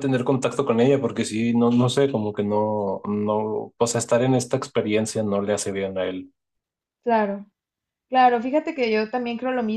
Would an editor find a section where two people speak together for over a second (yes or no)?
no